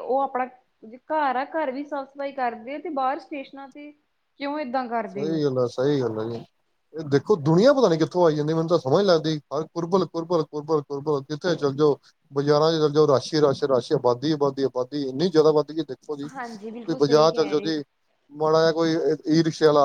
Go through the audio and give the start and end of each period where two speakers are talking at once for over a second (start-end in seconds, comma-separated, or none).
16.3-17.8